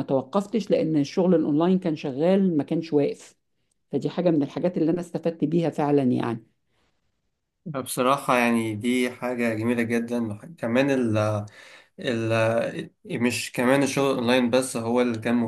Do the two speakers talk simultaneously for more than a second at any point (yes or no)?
no